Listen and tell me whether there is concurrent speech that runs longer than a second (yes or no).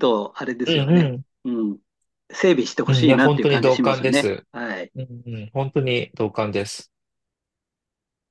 yes